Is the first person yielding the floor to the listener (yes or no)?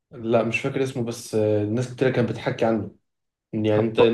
no